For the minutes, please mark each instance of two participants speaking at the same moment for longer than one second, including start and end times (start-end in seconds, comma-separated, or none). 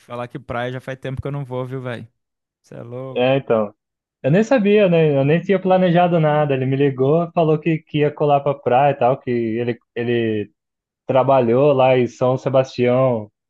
none